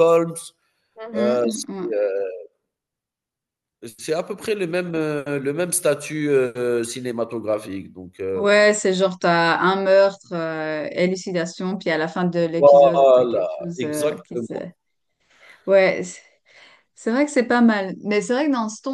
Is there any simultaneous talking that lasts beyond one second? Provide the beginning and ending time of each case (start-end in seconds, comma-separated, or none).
12.6-14.5